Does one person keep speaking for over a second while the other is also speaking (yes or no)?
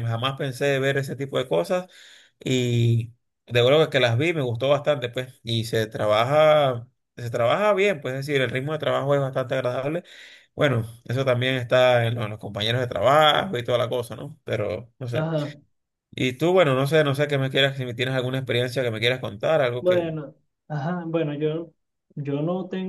no